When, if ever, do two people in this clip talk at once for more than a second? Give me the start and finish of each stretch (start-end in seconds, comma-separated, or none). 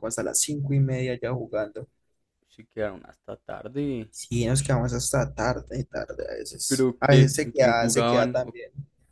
6.7-8.5